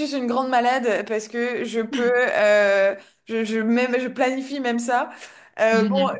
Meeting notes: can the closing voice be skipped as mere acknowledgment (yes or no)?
yes